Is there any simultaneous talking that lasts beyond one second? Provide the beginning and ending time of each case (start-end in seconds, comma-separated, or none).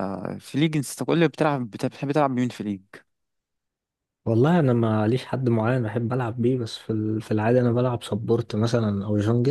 none